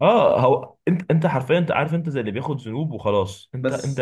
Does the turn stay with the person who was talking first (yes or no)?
yes